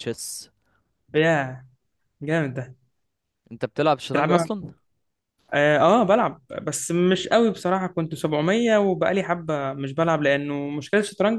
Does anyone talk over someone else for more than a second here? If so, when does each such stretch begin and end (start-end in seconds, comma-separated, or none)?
none